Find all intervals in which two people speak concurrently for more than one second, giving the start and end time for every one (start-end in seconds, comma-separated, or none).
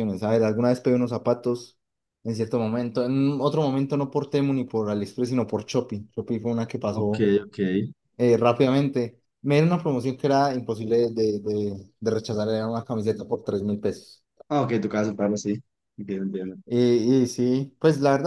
none